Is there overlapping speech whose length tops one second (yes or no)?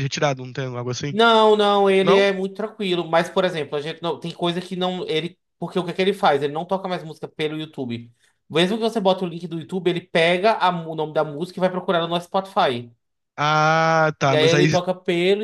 no